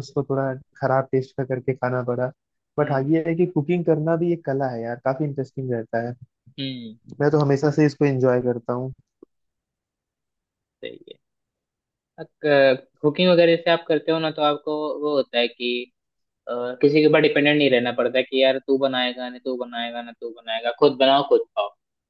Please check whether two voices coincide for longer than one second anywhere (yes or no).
no